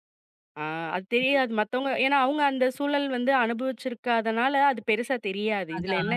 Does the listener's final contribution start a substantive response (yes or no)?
no